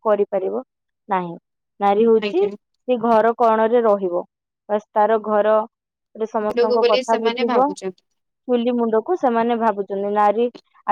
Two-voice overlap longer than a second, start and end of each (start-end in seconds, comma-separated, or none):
6.5-8.0